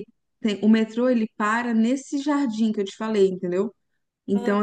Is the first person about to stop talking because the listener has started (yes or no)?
no